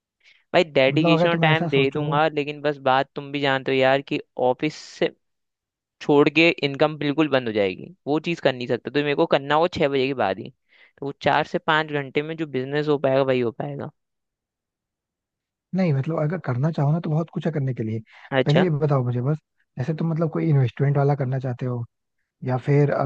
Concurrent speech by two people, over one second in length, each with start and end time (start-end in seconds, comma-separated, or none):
0.9-2.2